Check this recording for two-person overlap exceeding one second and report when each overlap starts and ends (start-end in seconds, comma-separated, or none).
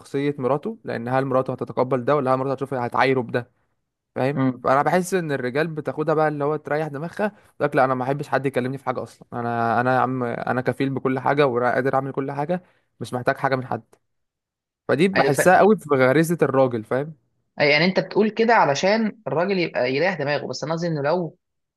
none